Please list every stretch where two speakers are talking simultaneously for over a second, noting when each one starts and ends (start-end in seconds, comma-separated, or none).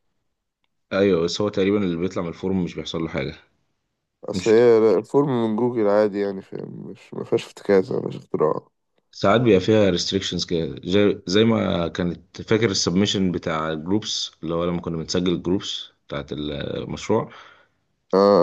none